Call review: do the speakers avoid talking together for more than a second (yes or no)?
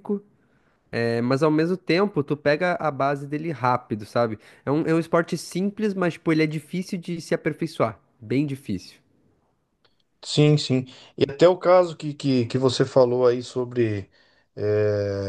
yes